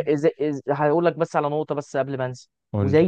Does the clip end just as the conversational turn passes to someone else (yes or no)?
no